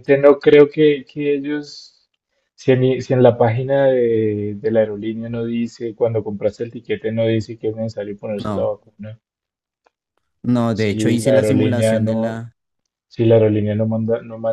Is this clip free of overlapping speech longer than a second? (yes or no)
no